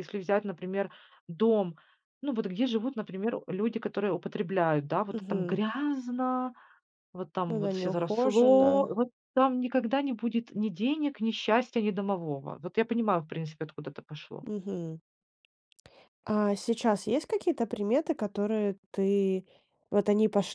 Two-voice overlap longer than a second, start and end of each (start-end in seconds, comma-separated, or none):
7.5-8.7